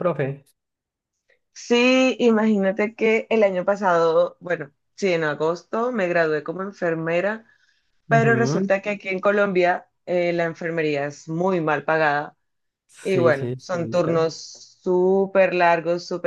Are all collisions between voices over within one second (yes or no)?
no